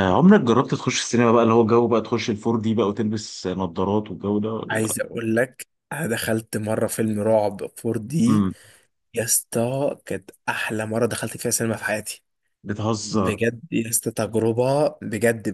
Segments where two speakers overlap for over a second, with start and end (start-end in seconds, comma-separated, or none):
none